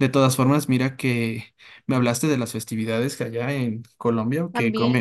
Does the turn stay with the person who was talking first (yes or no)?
yes